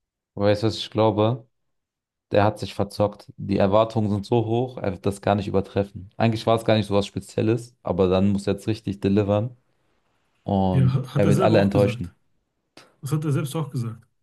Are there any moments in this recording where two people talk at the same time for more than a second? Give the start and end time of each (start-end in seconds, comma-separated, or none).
10.7-12.1